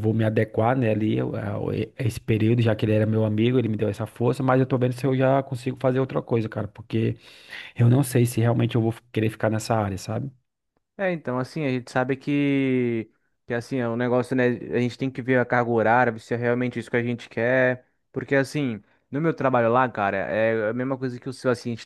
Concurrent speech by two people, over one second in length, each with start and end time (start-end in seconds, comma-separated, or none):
none